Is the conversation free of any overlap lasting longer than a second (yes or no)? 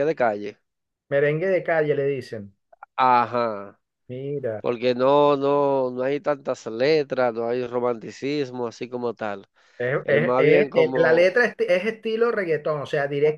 no